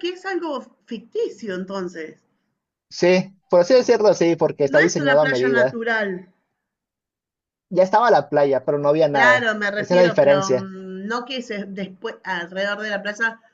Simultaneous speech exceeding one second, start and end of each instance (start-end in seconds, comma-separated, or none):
4.6-5.8, 9.1-10.7